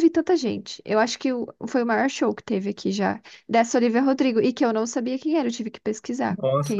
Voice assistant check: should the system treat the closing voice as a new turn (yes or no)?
yes